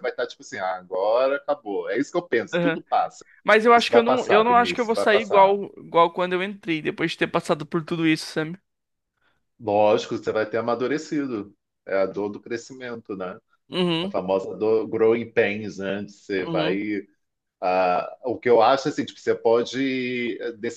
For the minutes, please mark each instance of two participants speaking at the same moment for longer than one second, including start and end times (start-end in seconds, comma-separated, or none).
3.7-5.5